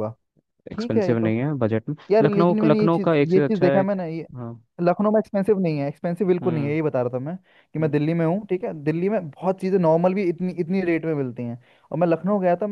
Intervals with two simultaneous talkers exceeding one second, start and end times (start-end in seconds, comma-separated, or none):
2.1-3.8